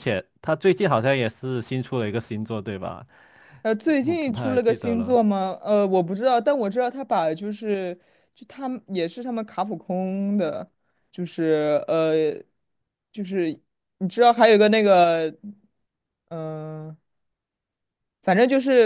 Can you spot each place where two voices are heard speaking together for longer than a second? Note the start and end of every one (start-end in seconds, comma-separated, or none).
3.8-5.2